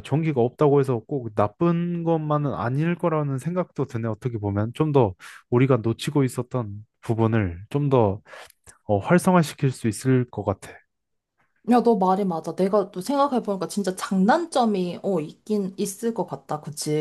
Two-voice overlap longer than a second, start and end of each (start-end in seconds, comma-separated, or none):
none